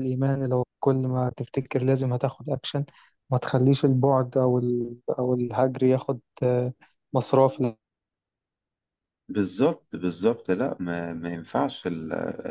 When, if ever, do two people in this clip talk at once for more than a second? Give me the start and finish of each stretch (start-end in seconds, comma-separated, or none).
none